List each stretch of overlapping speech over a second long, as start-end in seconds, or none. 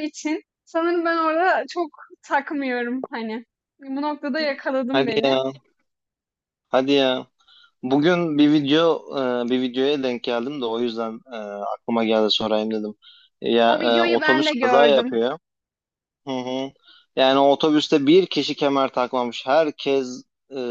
13.7-15.2